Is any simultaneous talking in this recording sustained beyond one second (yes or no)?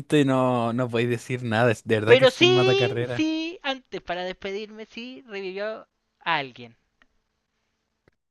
yes